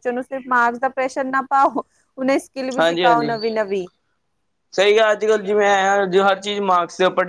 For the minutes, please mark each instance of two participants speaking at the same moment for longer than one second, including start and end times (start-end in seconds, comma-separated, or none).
none